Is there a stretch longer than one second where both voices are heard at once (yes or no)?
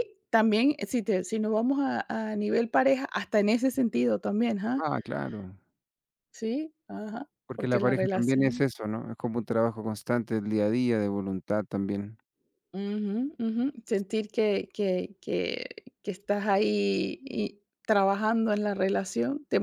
yes